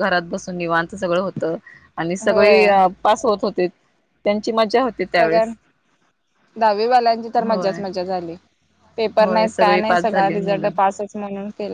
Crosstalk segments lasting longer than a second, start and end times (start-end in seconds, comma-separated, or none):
9.2-10.7